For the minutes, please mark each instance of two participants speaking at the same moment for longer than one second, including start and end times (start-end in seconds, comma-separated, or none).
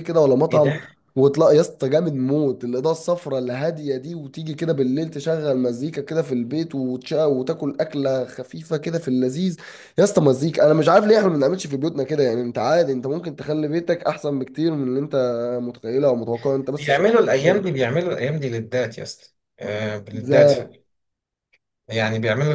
none